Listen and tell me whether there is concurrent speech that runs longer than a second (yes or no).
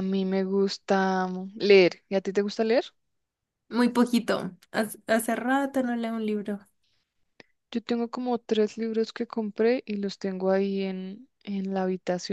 no